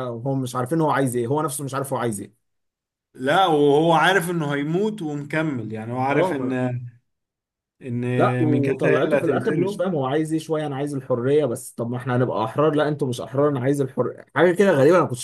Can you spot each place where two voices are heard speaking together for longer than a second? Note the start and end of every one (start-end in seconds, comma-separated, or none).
8.4-9.9